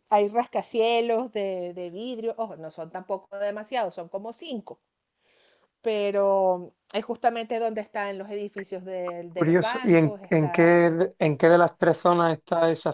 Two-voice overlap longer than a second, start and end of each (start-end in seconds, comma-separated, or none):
9.3-11.0